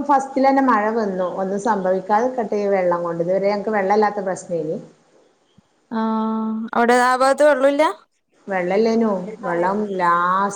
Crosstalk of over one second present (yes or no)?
no